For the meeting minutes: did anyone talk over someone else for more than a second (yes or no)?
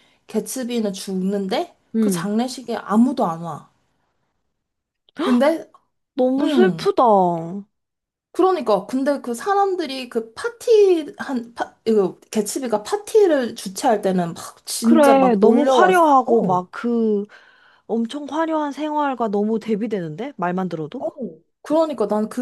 yes